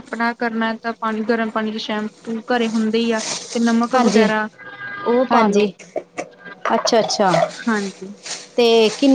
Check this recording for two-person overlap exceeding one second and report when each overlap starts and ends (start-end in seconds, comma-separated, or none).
none